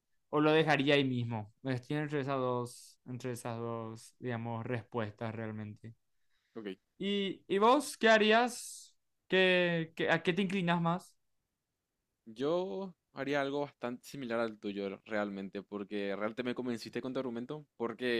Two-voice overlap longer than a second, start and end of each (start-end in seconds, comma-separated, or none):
none